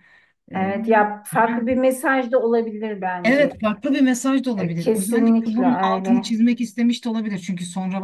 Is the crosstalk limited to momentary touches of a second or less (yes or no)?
no